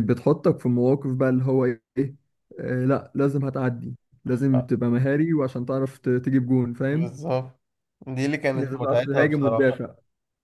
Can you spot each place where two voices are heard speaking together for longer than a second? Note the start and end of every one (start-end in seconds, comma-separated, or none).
8.5-9.8